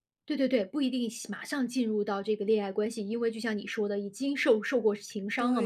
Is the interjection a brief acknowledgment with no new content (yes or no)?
no